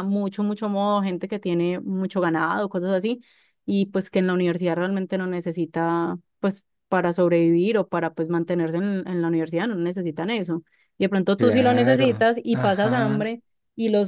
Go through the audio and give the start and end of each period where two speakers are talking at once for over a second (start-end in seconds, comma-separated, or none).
11.4-13.2